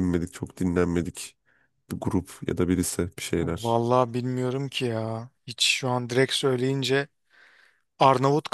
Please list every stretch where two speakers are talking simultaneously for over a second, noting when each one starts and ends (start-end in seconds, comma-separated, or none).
none